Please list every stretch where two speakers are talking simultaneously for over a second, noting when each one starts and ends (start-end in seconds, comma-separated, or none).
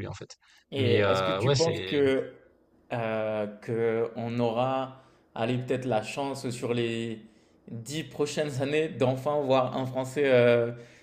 0.8-2.0